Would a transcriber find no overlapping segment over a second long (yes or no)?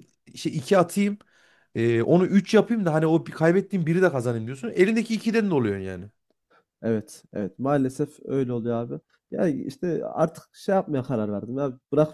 yes